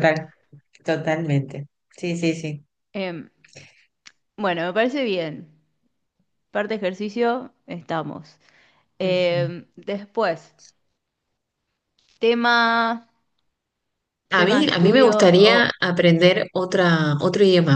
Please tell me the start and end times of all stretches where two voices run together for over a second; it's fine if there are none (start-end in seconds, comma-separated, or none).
14.3-15.7